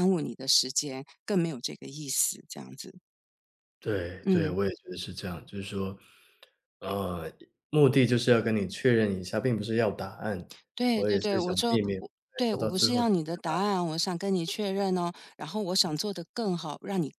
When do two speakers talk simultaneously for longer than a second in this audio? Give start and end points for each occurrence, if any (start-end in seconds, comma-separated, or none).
10.9-13.8